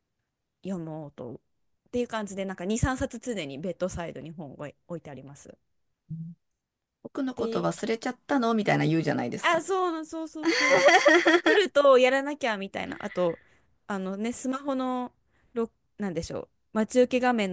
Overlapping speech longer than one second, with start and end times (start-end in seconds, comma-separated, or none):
none